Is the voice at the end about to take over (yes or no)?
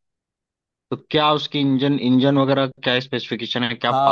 yes